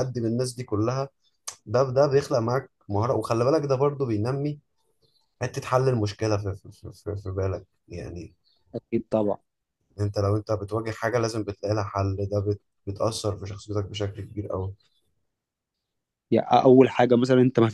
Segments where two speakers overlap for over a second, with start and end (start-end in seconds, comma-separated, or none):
none